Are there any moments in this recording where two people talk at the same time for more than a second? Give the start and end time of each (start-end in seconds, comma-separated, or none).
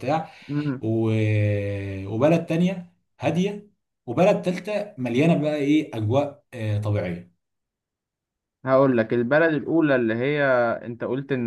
none